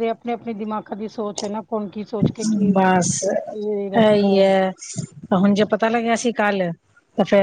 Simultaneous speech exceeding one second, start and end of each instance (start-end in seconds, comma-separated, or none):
none